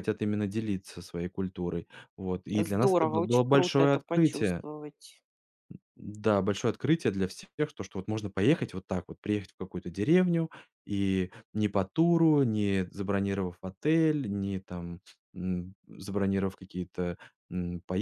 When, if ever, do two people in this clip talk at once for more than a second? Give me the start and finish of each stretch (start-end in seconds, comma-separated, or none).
2.6-4.6